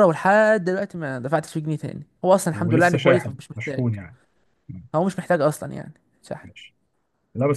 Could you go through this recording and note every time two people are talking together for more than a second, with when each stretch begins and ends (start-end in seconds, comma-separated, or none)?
2.5-3.9